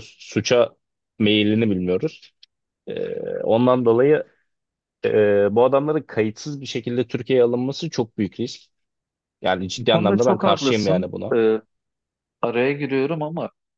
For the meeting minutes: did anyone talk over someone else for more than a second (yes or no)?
yes